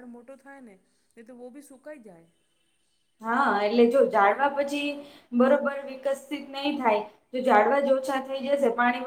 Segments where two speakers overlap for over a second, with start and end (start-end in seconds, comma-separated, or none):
none